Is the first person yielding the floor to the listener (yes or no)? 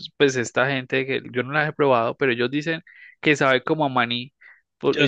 no